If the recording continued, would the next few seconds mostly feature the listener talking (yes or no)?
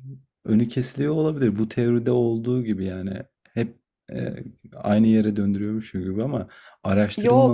no